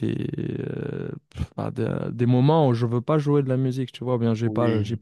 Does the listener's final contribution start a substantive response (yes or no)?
no